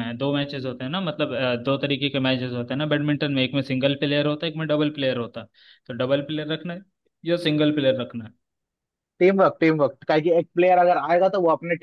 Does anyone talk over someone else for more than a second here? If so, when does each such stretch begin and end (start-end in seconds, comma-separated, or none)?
none